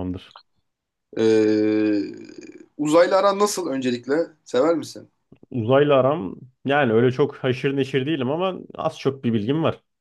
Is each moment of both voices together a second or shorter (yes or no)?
yes